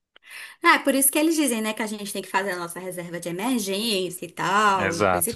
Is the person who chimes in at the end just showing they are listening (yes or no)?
no